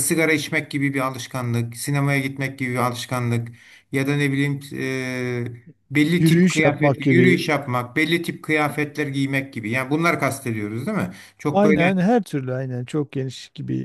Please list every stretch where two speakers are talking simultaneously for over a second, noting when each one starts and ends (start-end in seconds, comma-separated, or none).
6.2-7.5